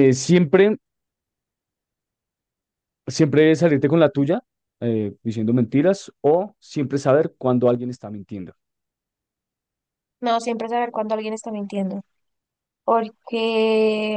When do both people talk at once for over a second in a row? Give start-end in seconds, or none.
none